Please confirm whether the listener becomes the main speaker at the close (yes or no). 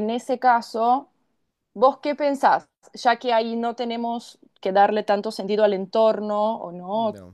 no